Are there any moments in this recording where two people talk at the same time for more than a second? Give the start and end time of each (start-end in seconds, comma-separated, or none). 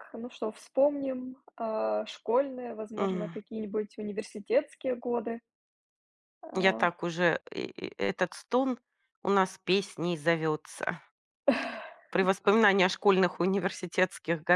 none